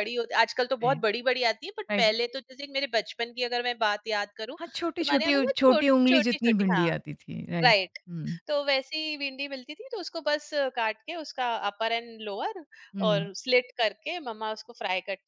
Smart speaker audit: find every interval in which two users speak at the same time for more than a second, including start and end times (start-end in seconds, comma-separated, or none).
5.0-6.9